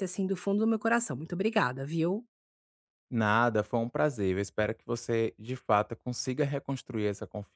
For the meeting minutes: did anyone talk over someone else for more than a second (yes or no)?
no